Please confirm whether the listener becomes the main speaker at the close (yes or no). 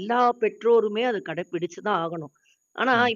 no